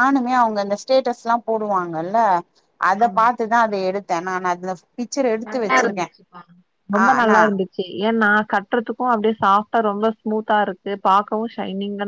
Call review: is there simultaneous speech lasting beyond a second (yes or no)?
no